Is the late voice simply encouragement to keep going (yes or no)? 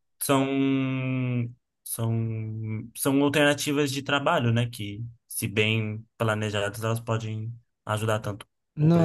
no